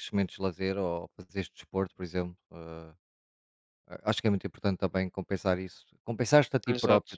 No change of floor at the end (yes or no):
yes